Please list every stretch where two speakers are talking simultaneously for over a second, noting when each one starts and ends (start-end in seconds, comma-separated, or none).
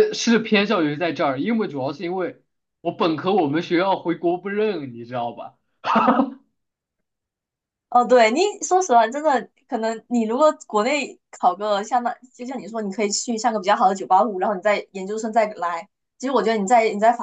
none